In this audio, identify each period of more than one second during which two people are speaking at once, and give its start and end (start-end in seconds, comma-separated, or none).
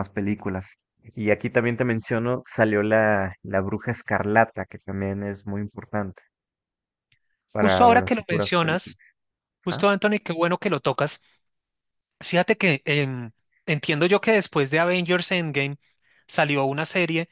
7.5-9.0